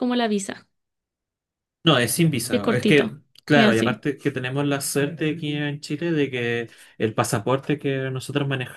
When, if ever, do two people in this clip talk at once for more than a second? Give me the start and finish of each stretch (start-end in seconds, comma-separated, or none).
2.5-4.0